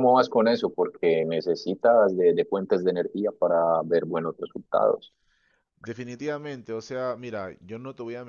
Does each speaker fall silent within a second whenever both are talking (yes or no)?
yes